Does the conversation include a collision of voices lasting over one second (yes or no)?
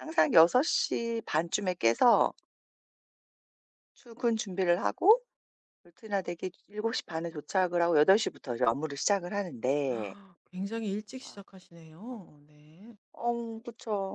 no